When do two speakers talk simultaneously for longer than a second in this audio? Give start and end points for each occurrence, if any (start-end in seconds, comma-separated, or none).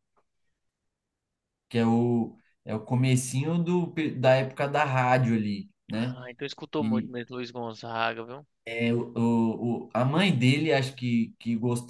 none